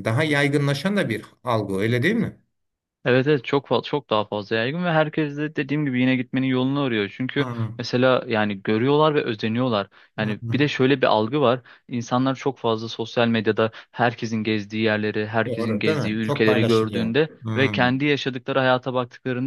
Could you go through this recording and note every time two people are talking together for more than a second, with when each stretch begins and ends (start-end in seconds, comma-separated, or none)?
15.4-17.5